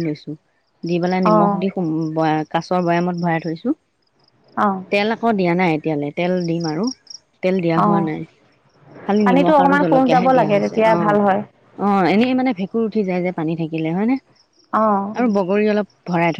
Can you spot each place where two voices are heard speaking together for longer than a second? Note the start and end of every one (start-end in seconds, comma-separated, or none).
9.2-11.3